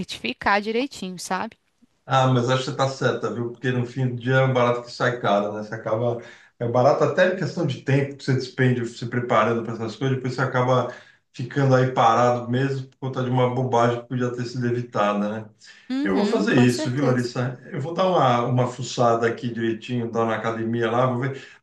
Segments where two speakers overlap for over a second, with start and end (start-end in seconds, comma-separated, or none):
16.0-17.3